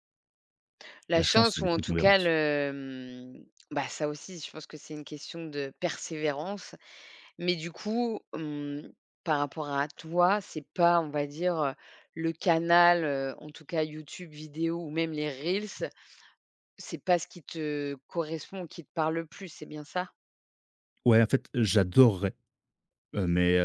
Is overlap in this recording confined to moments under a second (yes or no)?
no